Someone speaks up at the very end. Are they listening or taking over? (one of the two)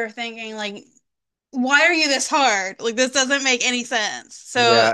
taking over